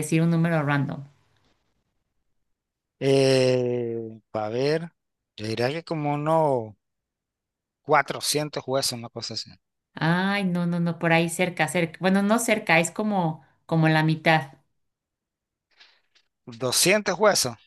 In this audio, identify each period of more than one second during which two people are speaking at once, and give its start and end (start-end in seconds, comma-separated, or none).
none